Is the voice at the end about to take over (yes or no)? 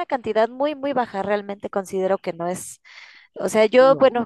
no